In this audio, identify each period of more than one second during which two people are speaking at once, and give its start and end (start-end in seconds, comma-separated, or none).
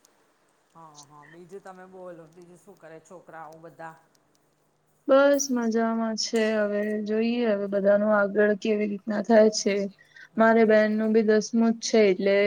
none